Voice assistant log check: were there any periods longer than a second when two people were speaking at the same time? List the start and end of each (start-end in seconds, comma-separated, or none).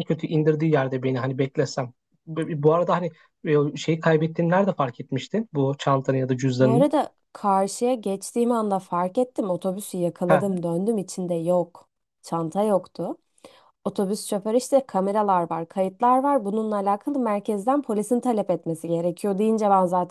none